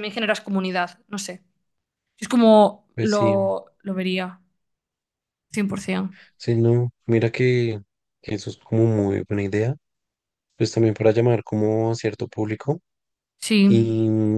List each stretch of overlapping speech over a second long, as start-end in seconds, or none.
none